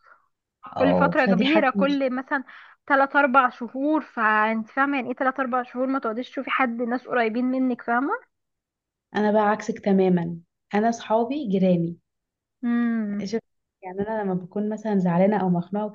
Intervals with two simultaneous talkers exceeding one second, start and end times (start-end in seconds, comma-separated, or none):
0.8-2.0